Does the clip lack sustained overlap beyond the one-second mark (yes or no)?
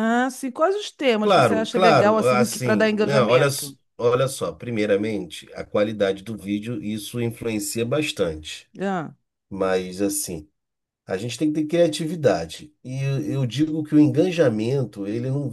no